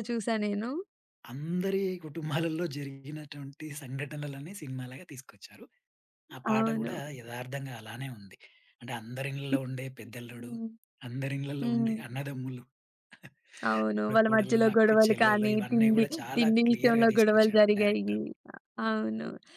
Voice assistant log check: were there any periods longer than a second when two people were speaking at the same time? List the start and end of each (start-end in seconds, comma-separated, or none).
14.0-18.2